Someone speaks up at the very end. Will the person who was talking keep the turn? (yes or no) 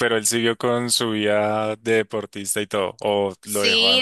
no